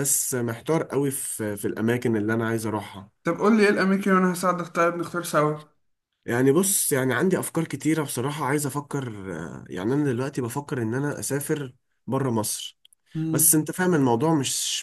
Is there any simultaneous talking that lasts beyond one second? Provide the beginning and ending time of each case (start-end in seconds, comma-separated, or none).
none